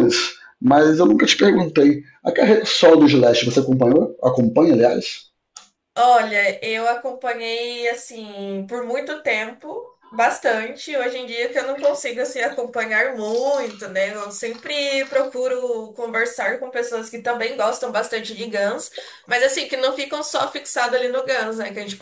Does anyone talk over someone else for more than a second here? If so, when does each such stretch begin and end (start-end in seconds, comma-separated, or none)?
none